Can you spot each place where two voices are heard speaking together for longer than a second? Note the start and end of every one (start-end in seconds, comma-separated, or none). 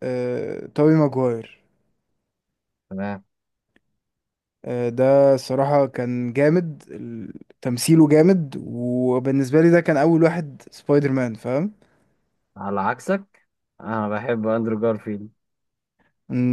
none